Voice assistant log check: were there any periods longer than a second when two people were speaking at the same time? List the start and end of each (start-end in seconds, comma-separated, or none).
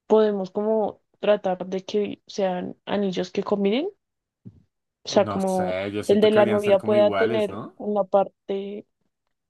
5.2-7.8